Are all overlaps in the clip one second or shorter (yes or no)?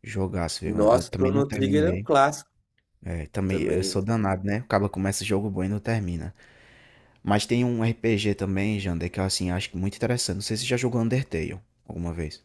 no